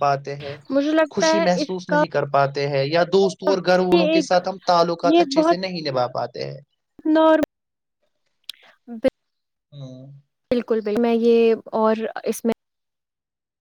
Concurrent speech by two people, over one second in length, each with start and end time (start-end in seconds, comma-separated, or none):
none